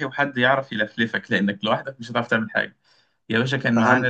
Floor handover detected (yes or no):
no